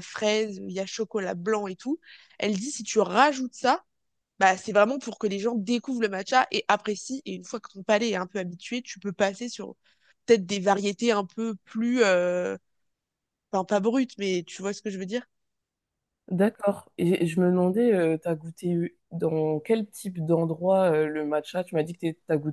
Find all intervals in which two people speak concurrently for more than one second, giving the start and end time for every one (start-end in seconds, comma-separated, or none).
none